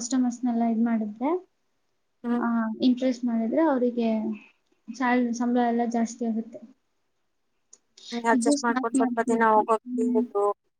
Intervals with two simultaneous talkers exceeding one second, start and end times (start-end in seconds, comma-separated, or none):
8.4-10.2